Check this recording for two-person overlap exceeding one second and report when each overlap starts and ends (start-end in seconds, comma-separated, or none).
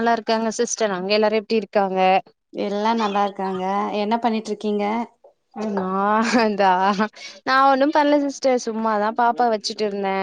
none